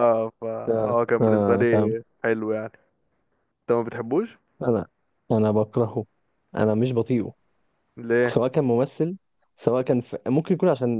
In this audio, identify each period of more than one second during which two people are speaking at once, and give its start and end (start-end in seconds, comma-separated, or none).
0.7-1.9